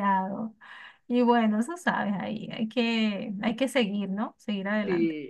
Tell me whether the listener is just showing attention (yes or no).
no